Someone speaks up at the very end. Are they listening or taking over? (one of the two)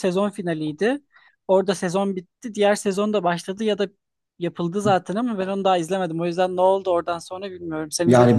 taking over